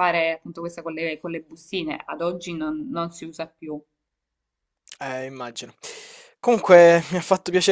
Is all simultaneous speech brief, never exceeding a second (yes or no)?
yes